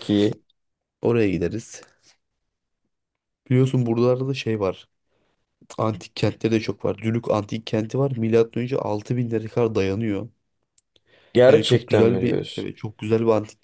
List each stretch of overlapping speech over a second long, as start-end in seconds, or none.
11.5-12.7